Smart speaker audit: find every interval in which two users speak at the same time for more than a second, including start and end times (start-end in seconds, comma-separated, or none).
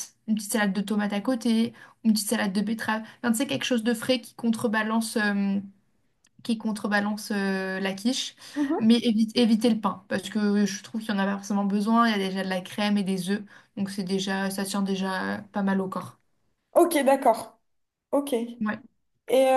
none